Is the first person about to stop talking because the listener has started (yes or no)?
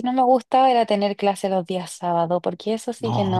yes